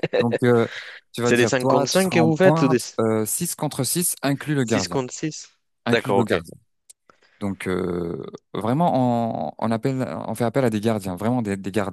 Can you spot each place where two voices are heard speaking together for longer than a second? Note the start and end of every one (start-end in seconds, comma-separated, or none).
1.2-2.8